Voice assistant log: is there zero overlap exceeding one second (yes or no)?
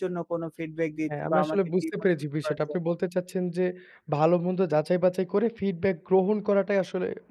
no